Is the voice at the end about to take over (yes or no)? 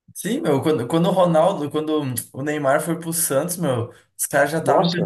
no